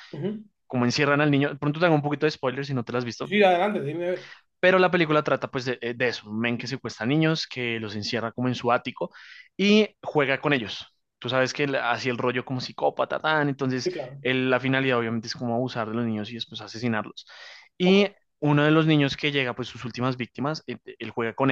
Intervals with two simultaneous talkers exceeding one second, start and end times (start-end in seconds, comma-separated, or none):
none